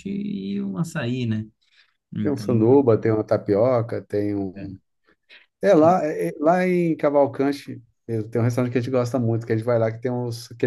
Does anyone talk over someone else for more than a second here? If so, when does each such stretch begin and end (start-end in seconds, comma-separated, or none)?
none